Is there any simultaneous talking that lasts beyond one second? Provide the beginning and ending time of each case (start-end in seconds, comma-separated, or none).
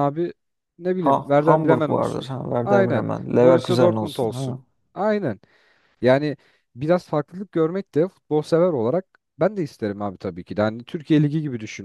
1.0-4.6